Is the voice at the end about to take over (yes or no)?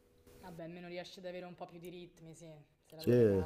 yes